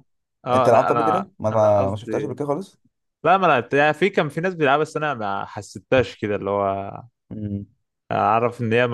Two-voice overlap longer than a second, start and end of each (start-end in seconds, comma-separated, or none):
0.5-2.4